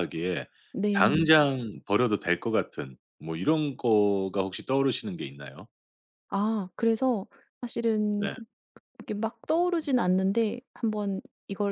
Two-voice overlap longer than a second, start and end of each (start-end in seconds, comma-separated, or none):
none